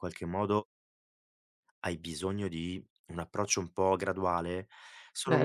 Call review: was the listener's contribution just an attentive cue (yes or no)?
yes